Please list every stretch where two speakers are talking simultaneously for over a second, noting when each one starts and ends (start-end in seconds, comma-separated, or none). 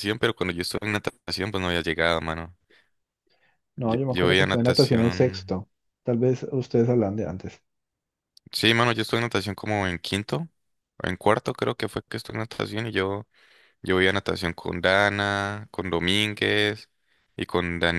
3.8-5.6